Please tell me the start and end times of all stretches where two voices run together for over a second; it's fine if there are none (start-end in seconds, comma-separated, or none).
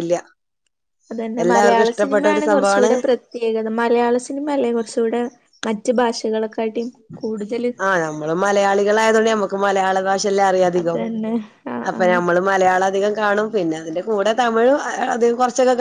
1.4-2.9